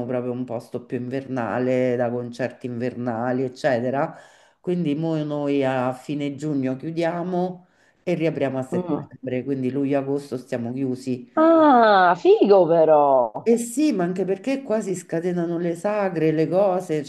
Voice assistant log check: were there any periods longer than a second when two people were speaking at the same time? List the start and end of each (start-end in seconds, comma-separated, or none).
none